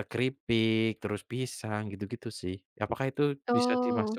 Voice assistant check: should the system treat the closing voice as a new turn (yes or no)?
no